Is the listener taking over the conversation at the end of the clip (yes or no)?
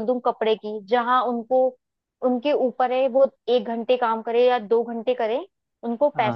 no